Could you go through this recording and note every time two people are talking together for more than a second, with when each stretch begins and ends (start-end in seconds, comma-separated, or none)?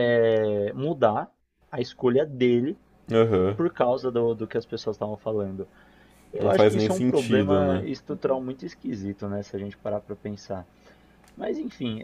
6.4-7.8